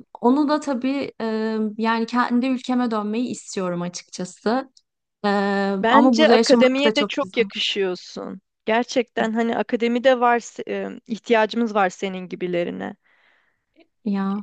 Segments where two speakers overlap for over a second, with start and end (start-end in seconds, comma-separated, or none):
5.9-7.5